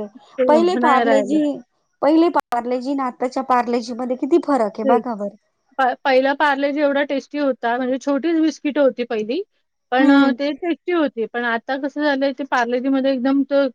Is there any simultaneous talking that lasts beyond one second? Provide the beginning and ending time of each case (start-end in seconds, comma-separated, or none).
none